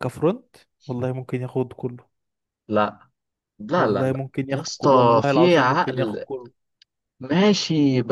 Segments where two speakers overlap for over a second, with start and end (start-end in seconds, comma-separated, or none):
3.8-6.3